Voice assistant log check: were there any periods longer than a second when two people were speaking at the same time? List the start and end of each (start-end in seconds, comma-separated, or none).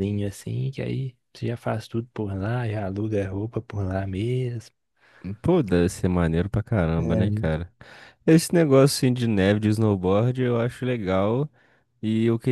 none